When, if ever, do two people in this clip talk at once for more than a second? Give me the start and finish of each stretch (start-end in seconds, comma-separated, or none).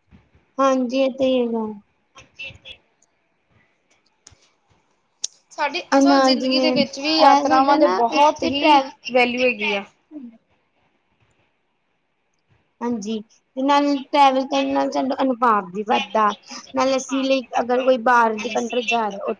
5.9-8.8